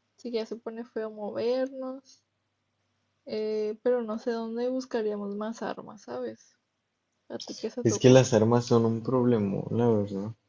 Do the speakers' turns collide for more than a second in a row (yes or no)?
no